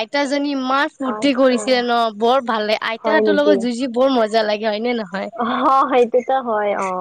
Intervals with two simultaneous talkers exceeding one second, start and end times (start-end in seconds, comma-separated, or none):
none